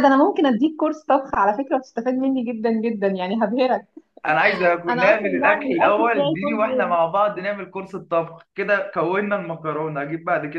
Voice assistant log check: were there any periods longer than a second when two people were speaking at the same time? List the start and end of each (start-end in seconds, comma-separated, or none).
4.9-6.9